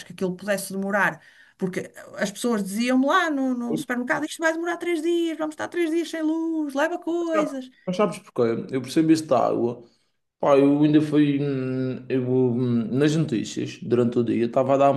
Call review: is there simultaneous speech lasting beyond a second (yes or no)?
no